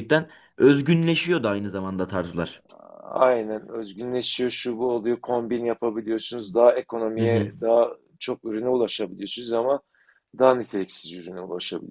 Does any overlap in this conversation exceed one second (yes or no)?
no